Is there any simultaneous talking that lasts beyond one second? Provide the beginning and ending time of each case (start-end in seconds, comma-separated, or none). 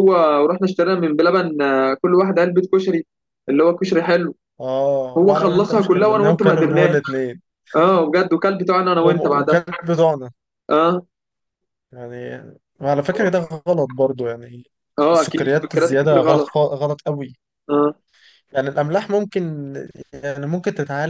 5.2-7.0, 15.1-16.5